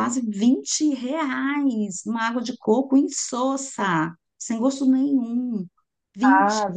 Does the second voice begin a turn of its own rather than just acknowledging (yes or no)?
no